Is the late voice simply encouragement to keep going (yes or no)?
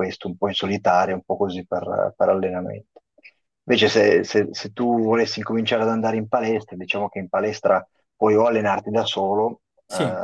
yes